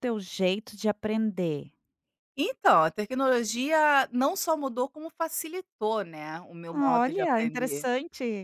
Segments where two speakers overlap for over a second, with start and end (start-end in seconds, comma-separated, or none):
6.7-7.9